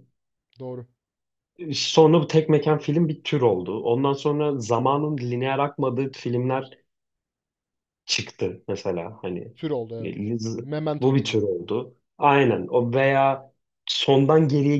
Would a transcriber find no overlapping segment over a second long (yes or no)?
yes